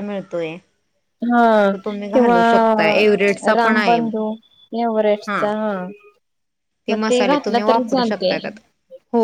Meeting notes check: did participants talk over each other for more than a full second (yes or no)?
yes